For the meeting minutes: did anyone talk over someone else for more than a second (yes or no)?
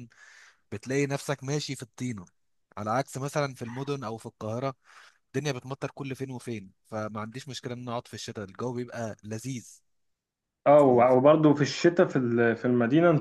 no